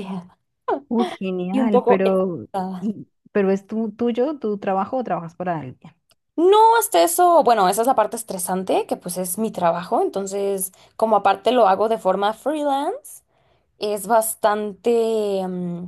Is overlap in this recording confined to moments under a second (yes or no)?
no